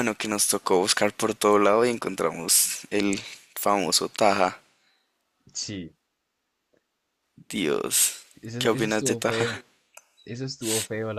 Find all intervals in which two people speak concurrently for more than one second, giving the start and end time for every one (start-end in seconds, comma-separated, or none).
8.4-9.6